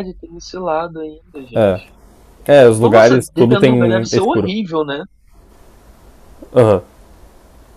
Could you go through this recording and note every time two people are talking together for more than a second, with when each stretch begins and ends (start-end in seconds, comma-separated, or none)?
2.8-4.5